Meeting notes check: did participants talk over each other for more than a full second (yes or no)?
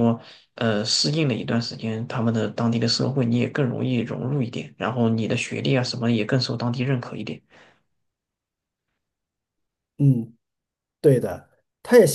no